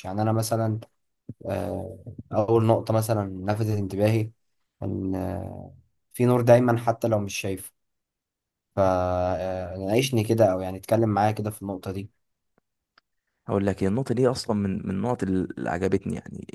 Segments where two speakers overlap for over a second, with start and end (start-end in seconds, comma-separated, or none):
none